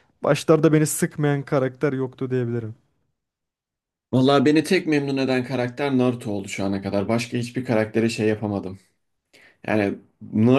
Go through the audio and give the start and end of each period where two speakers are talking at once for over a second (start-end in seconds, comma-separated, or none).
none